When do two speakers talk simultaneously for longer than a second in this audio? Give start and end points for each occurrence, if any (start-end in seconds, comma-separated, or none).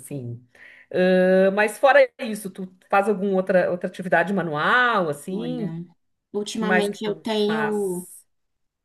6.5-8.1